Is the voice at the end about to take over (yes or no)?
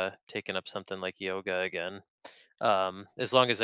no